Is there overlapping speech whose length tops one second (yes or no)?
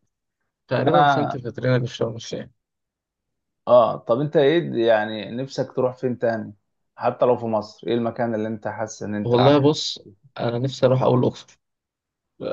no